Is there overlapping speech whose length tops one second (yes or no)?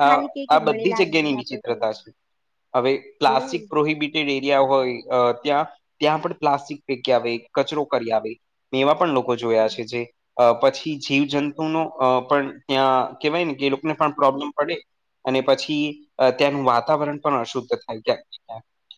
yes